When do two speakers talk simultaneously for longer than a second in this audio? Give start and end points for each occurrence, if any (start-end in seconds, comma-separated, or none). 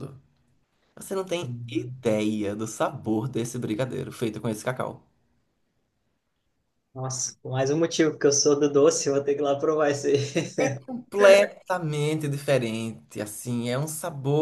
none